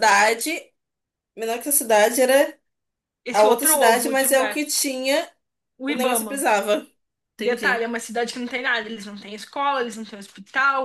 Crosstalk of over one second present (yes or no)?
yes